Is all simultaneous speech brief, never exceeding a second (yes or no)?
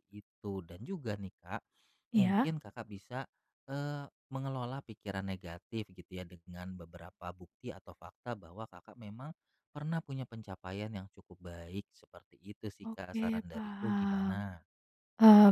no